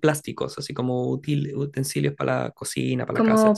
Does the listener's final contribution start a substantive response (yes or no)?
yes